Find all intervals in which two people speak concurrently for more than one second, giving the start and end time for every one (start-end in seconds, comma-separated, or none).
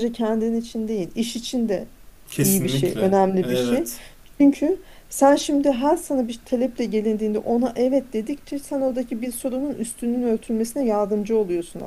2.3-3.9